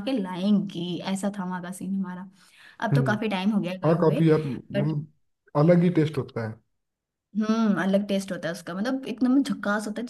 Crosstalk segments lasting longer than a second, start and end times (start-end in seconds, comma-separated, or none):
none